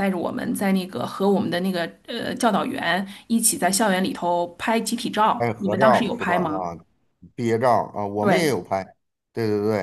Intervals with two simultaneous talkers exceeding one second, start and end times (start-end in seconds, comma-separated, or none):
5.4-6.7